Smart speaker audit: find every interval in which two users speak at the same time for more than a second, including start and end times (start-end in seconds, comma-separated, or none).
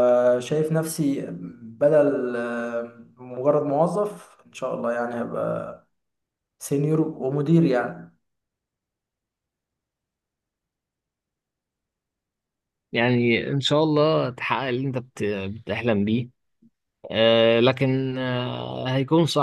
none